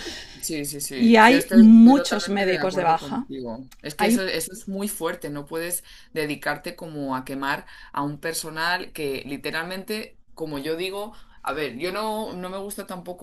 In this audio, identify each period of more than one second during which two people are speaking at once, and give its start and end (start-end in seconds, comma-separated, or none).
0.9-3.2